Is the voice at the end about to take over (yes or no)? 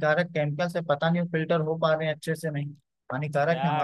yes